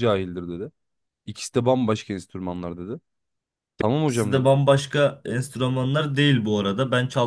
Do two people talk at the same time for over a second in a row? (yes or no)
no